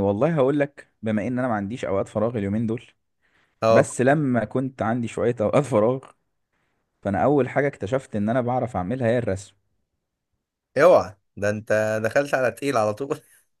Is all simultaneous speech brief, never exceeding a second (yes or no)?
yes